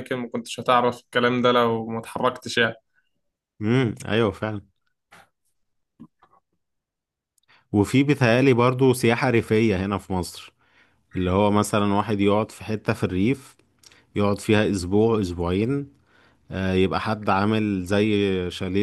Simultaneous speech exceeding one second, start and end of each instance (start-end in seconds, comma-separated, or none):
none